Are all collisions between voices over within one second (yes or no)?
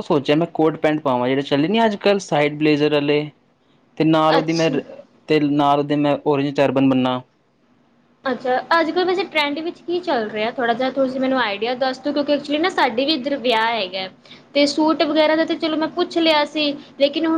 yes